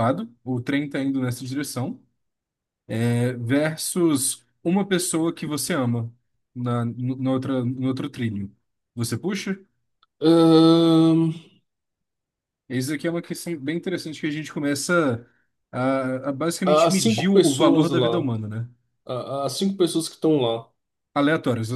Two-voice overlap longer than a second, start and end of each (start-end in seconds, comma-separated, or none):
16.6-18.3